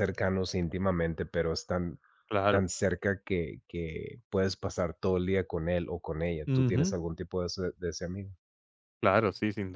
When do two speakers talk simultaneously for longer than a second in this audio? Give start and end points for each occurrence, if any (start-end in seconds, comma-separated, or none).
none